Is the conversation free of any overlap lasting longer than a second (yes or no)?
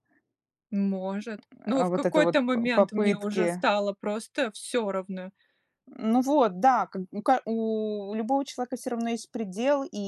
no